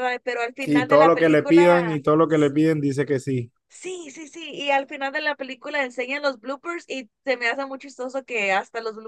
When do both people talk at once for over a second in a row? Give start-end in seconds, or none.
0.6-2.0